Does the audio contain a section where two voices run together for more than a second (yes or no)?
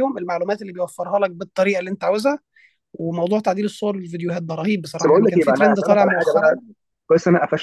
yes